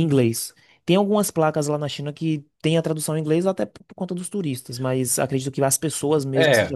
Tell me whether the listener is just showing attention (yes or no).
no